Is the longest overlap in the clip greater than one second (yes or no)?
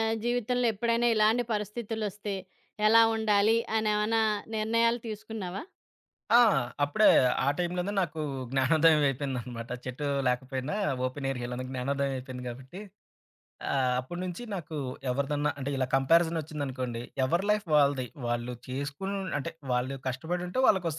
no